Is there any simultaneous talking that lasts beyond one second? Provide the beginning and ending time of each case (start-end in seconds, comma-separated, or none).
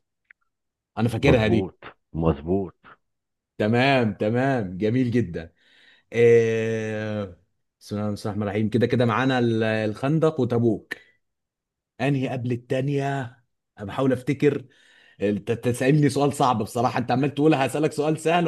none